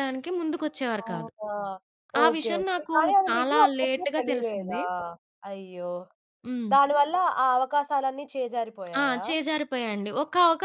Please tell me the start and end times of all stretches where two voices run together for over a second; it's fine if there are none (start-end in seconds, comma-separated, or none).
2.2-4.8